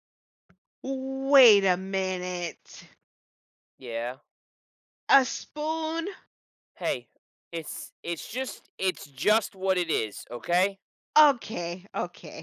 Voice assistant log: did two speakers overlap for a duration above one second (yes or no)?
no